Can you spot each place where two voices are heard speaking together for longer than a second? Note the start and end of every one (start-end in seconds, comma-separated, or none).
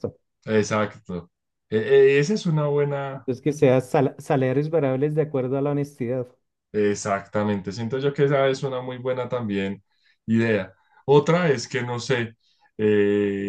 none